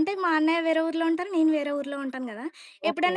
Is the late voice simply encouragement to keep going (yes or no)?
yes